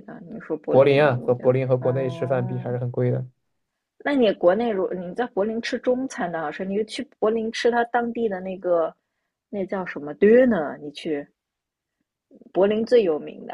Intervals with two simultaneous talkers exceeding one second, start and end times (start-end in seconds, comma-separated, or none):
0.7-2.8